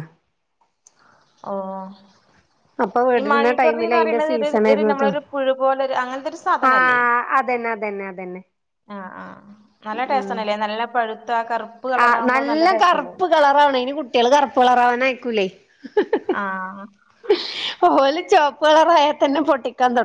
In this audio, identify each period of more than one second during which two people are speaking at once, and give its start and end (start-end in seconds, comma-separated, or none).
3.2-5.1